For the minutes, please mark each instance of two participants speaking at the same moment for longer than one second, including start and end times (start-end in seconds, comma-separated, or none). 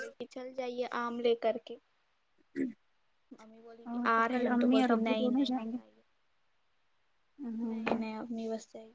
4.3-5.8